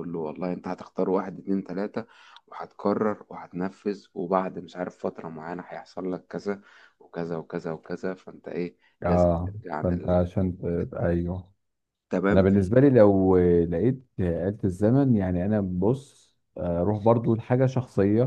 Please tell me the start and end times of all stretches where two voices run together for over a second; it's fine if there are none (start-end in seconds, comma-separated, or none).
9.0-11.1